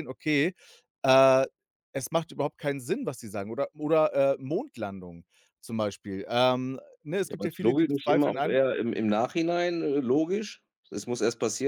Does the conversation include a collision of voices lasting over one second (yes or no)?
yes